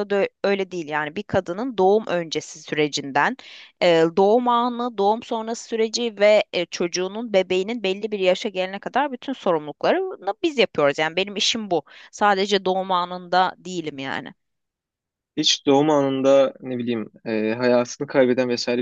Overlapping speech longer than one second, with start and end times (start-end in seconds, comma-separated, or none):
none